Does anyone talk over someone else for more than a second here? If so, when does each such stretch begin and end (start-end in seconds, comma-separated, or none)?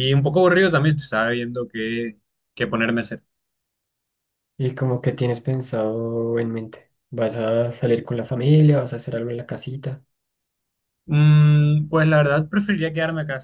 none